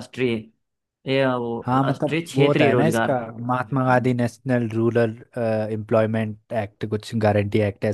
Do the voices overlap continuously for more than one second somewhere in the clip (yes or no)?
yes